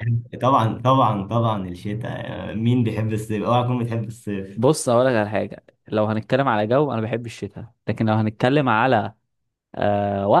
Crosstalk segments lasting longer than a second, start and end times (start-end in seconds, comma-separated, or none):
none